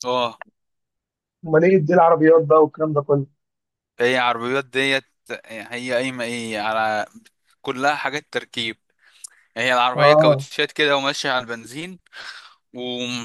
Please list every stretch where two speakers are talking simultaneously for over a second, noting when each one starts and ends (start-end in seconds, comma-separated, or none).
none